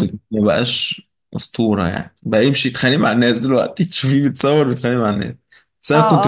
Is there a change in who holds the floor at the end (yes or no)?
yes